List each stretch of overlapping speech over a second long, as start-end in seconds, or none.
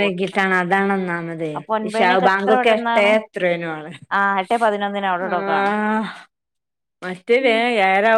none